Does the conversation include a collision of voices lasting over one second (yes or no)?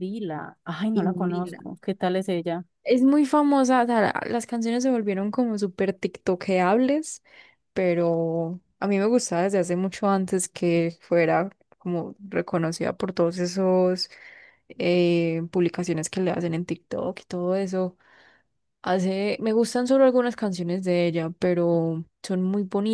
no